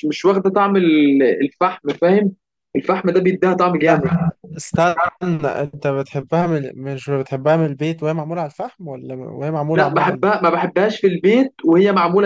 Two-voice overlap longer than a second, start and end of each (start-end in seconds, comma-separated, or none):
none